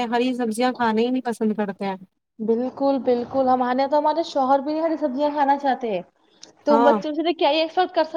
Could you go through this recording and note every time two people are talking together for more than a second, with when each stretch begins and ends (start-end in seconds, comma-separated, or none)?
none